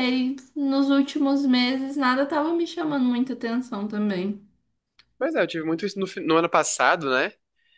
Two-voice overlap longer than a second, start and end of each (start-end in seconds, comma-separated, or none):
none